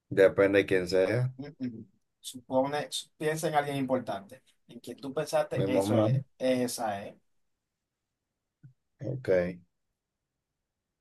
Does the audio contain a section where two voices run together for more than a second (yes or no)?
no